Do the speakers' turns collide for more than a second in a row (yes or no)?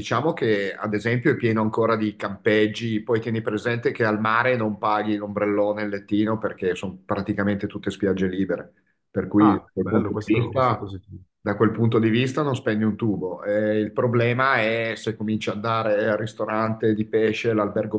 yes